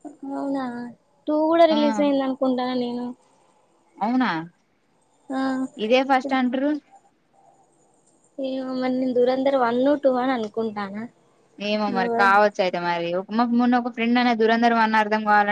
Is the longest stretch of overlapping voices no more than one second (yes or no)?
yes